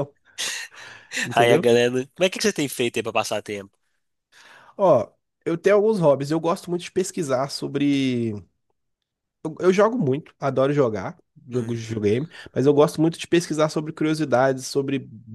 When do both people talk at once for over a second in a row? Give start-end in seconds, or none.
none